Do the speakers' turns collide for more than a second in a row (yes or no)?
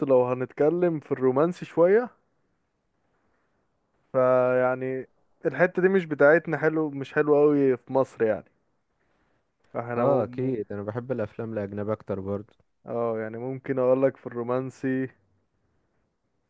no